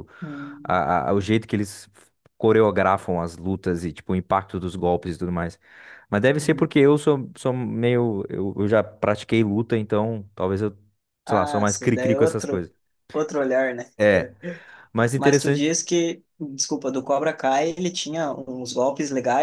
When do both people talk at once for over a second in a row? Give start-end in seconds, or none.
11.3-12.7